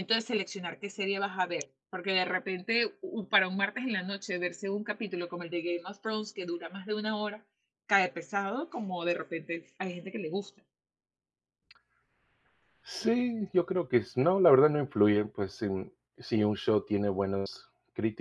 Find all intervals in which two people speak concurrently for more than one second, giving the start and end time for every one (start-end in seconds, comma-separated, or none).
none